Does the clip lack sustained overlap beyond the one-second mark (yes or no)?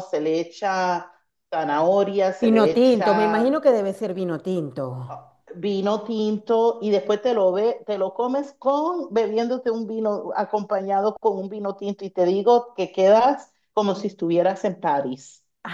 no